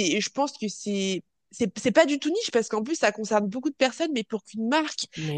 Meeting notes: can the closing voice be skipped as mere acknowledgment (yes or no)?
yes